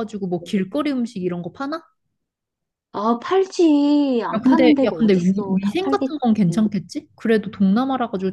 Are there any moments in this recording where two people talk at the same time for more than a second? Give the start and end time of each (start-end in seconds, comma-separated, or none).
4.4-6.2